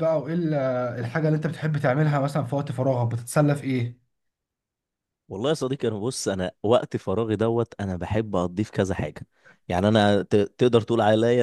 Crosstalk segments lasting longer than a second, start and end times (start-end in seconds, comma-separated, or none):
none